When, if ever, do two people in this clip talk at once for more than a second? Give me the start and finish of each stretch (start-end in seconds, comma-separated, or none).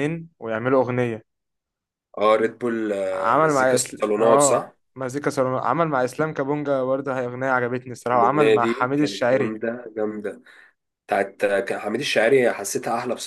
3.1-4.7, 8.1-9.6